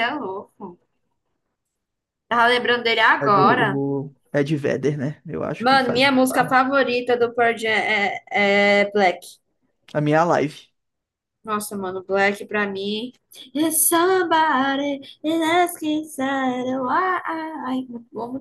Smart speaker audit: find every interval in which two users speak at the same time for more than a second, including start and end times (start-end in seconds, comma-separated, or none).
none